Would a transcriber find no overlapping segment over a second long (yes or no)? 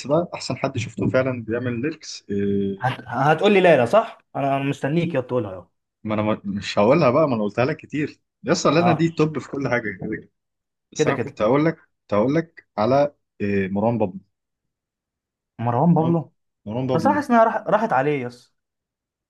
yes